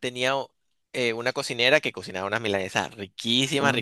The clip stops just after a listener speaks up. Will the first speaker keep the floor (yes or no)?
yes